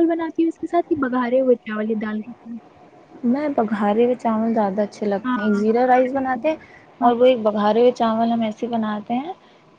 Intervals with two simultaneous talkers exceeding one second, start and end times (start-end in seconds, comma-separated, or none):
none